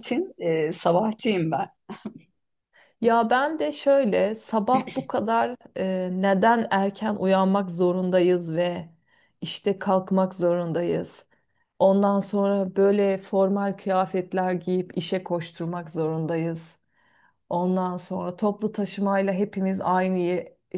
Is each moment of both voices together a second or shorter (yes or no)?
yes